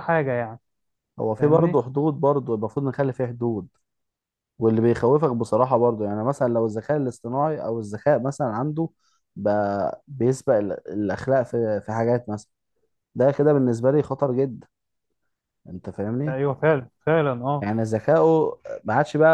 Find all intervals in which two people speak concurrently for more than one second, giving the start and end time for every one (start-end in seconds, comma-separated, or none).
none